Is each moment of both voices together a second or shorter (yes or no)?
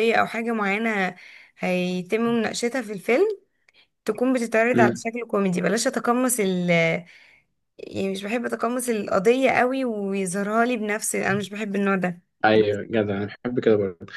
yes